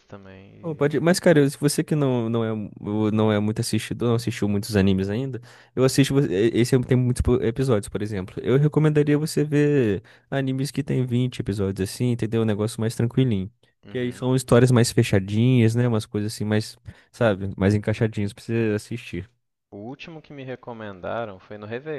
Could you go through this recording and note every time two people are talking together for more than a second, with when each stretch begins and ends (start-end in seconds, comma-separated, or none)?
none